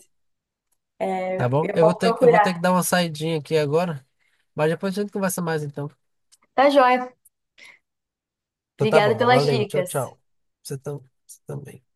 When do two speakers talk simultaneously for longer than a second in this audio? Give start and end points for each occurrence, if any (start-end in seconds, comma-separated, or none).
1.4-2.6, 8.8-10.1